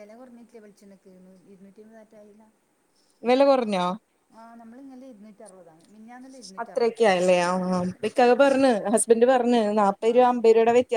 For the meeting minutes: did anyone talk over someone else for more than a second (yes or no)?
no